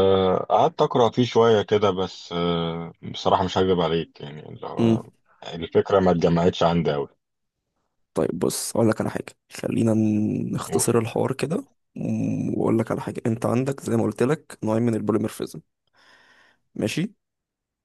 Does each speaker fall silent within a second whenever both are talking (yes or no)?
yes